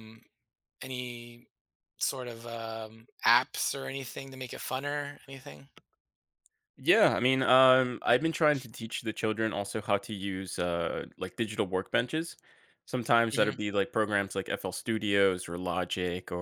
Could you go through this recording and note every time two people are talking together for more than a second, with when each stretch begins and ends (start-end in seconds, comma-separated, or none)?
none